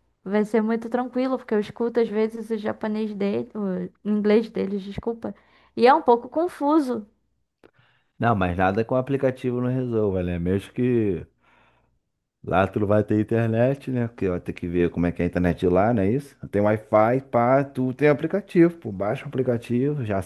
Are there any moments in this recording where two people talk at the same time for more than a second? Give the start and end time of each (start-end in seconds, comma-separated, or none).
none